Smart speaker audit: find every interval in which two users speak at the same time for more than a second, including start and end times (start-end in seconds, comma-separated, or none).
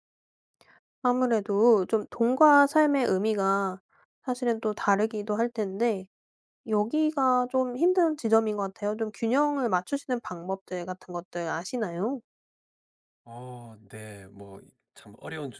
none